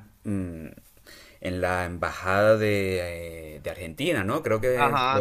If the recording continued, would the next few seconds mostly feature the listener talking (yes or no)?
yes